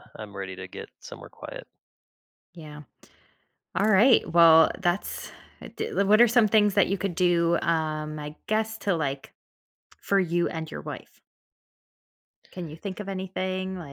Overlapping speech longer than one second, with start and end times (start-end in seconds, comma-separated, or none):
none